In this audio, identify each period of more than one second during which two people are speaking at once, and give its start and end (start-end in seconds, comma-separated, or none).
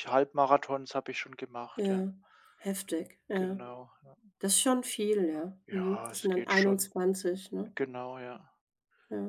5.7-6.9